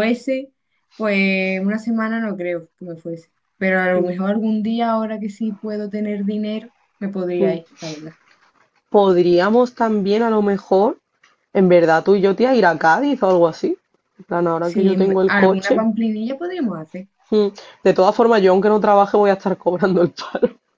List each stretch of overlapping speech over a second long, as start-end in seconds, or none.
14.6-15.8